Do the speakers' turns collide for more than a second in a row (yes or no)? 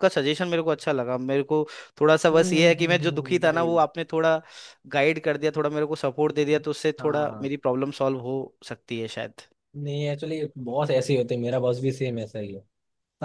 yes